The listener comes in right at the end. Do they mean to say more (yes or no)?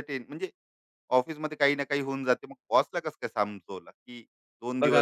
yes